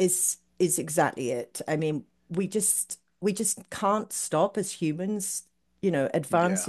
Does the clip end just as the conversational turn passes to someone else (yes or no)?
no